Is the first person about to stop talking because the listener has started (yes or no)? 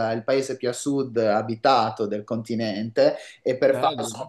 no